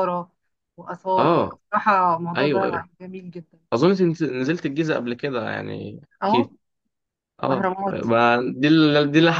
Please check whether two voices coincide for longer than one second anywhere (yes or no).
no